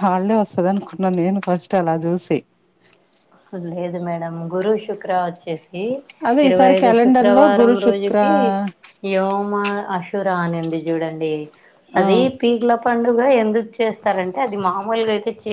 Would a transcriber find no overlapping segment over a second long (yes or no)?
no